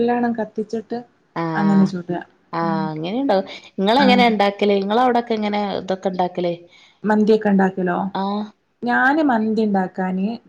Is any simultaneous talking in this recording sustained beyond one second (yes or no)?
no